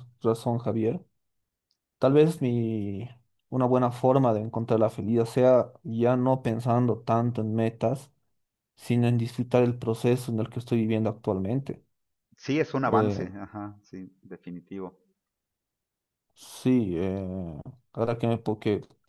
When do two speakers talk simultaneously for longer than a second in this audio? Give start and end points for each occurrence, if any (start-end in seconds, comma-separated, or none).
none